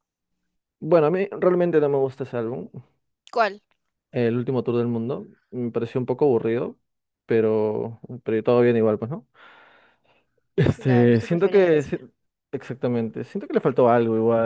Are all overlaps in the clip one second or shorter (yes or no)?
no